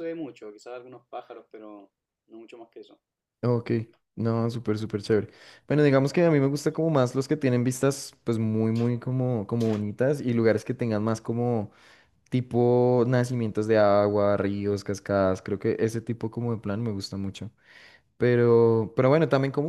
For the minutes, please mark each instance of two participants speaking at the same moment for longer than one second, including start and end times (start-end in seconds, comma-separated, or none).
none